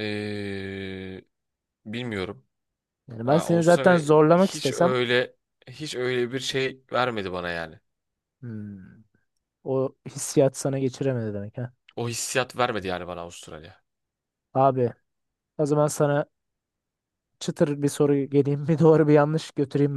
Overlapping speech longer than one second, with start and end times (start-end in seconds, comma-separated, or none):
3.3-4.9